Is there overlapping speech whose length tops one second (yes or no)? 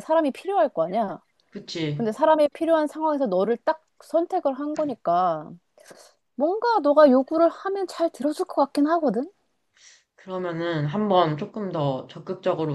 no